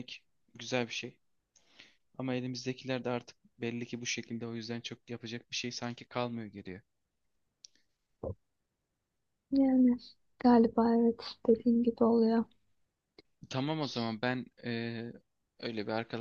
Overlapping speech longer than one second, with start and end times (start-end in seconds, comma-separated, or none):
none